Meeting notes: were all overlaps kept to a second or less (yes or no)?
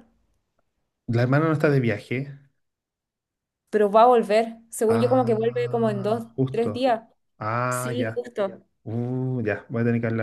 no